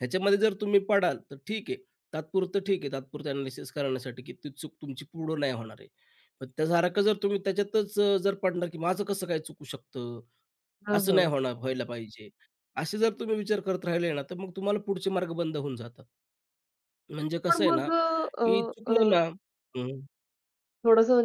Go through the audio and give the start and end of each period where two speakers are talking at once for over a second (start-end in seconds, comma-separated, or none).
17.5-19.1